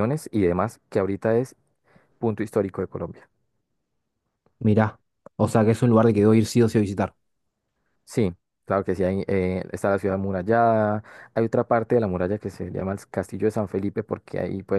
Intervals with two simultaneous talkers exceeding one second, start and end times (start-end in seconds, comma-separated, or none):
none